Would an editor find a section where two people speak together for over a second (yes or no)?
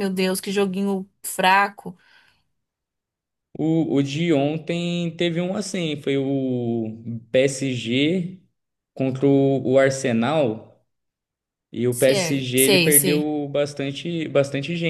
yes